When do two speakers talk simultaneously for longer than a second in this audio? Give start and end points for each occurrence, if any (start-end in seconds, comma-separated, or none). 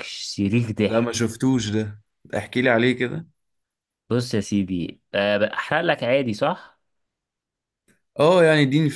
none